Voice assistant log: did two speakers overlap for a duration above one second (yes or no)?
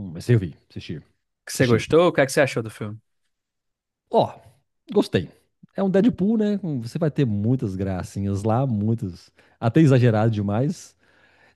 no